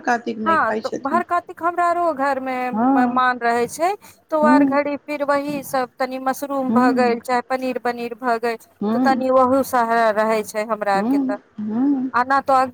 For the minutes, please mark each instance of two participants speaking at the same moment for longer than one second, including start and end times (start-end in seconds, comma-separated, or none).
none